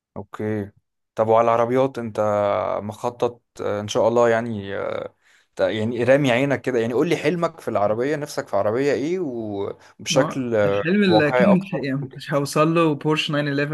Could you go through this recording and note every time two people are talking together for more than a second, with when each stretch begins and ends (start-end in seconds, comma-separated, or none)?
10.1-11.9